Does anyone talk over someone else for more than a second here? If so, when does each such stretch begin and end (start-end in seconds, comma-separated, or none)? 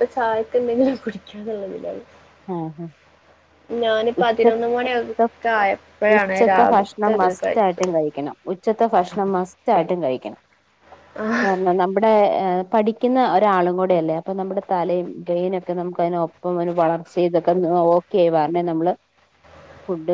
6.2-7.9